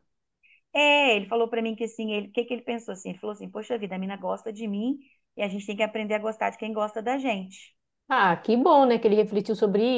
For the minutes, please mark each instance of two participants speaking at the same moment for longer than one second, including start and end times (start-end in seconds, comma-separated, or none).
none